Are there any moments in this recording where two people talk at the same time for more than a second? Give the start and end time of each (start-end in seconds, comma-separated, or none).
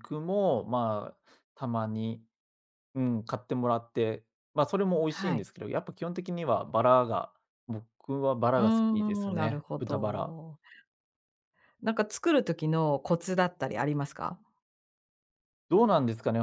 8.6-10.3